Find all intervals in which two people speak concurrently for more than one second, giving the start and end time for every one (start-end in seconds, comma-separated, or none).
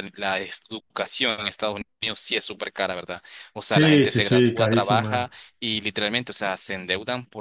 3.7-5.4